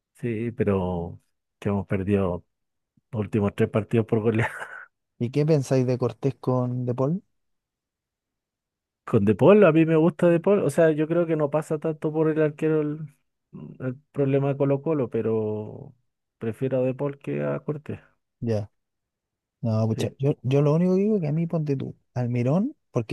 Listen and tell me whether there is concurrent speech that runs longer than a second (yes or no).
no